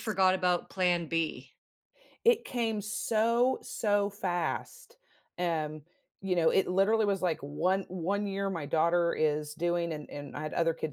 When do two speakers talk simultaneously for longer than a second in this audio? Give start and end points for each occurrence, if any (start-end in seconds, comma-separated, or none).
none